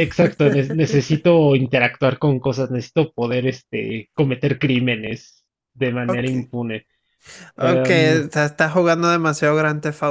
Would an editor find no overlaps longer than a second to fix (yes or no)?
yes